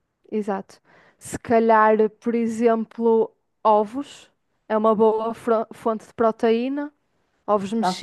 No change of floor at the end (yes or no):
no